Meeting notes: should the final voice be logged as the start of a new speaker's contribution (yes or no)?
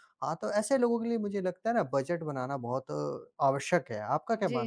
yes